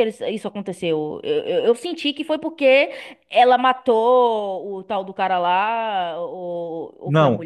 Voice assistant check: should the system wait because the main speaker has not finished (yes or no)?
no